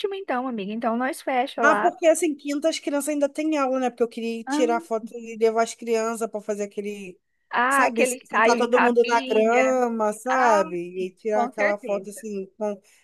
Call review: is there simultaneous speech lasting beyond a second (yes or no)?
yes